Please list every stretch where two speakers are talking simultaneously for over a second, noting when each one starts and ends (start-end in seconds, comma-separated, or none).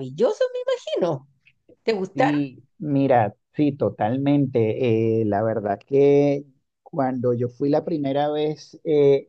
none